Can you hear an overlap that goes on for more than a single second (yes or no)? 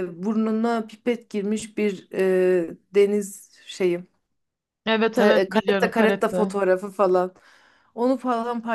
yes